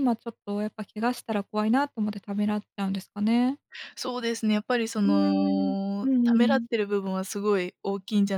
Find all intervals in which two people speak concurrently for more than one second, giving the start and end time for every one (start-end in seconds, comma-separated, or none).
5.0-6.7